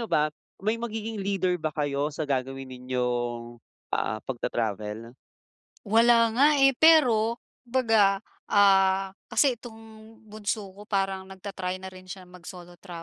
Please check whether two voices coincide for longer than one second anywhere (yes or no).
no